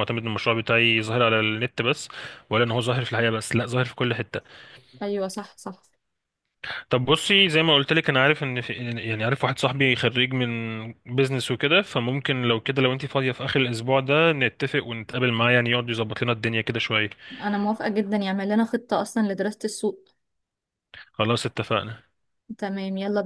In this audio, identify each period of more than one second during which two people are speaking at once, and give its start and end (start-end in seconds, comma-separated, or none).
none